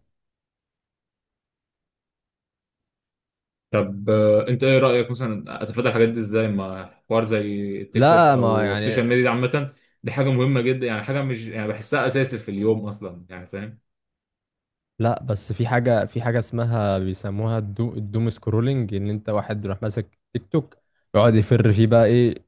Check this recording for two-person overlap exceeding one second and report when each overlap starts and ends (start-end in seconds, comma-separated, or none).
7.9-9.1